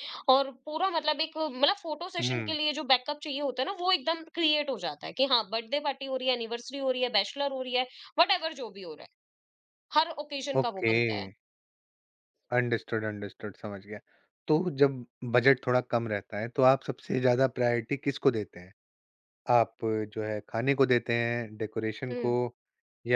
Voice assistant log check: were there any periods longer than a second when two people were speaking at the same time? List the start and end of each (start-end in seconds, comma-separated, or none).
none